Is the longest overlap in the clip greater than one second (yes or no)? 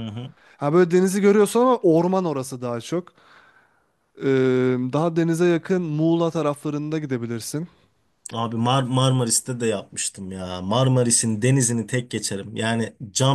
no